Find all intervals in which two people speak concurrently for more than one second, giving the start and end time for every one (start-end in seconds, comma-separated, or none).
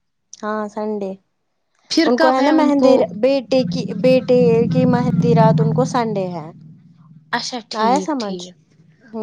none